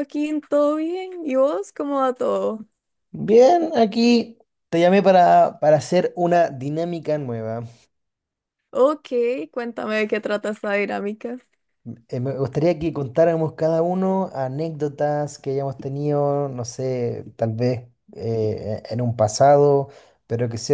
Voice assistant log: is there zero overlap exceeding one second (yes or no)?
yes